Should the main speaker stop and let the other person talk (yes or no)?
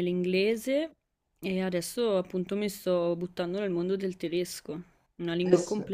no